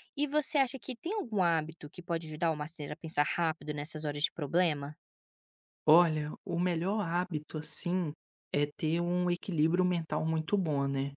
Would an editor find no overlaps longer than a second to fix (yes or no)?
yes